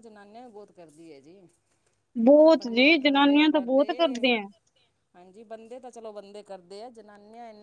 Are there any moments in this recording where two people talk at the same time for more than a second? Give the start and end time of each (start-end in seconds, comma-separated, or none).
2.5-3.9